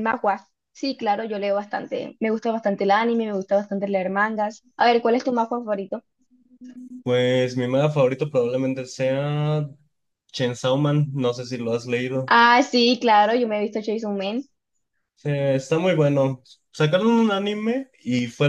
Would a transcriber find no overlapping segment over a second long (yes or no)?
yes